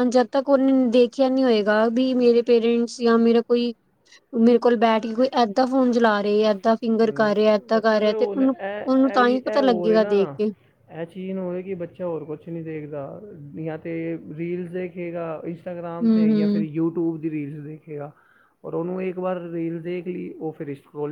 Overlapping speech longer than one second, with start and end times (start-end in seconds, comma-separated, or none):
7.0-10.1